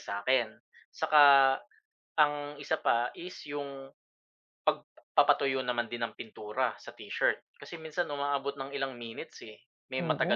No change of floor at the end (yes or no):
yes